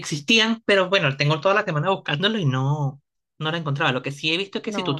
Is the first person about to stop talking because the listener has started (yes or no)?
no